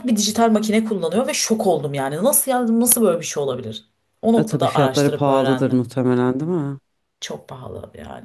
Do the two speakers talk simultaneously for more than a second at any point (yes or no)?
yes